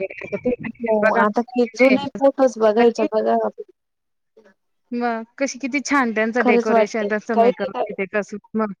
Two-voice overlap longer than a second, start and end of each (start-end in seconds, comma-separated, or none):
6.4-8.0